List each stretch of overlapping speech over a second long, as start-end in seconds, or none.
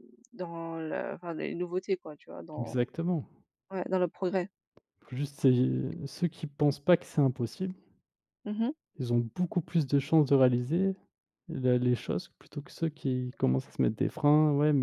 none